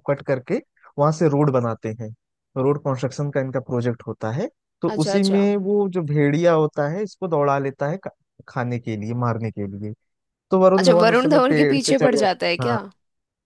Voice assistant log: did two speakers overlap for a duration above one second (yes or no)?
yes